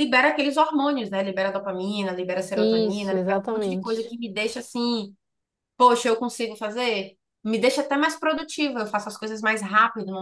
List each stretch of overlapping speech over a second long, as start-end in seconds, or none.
2.5-4.1